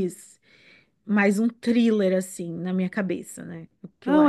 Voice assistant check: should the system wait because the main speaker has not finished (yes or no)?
no